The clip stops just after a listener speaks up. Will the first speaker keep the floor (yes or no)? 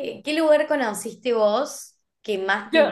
yes